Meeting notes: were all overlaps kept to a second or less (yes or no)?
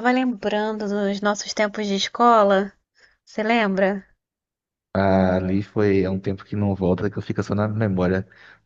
yes